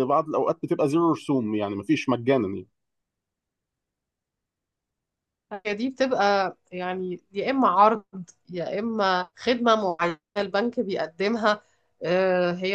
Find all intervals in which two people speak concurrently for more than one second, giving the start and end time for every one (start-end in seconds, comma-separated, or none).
none